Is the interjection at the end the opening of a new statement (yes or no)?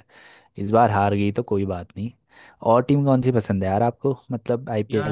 yes